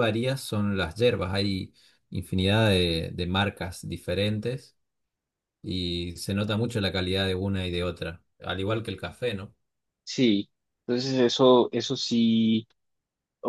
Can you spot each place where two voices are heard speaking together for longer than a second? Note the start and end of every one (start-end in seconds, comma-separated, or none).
none